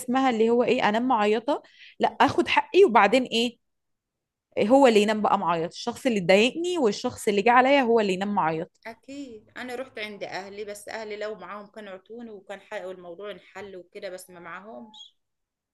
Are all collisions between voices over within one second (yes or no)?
yes